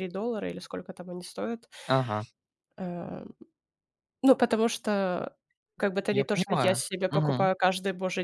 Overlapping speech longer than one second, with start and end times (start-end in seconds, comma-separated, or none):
6.1-7.5